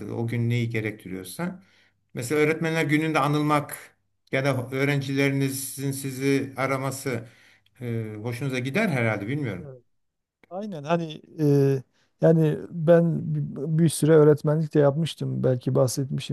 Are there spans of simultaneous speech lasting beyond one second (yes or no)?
no